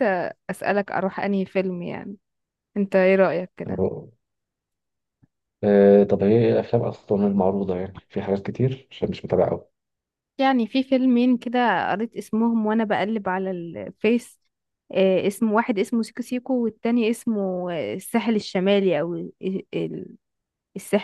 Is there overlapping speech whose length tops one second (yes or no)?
no